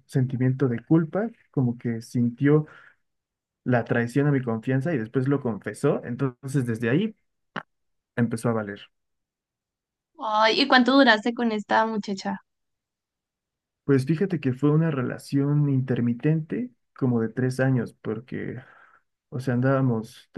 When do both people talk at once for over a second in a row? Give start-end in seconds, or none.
none